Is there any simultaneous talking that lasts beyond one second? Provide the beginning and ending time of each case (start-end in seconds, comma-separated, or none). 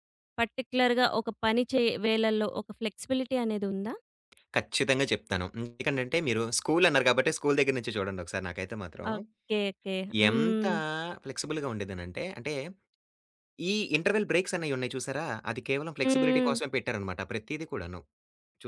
none